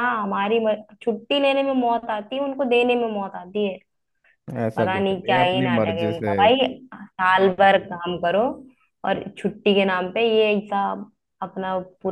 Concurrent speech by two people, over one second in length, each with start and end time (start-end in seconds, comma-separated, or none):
4.8-6.3